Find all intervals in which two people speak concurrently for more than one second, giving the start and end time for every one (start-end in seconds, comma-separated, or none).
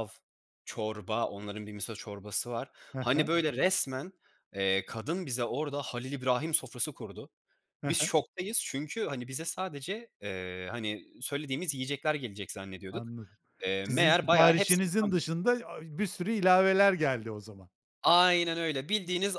13.8-15.2